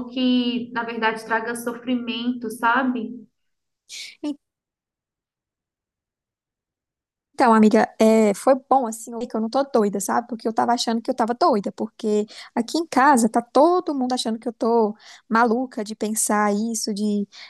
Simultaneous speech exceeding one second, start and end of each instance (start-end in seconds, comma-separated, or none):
none